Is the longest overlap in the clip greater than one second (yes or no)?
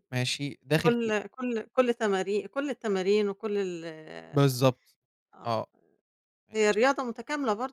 no